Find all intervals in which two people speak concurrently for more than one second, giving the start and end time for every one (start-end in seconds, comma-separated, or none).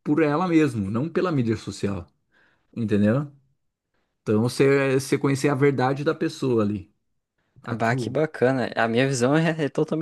none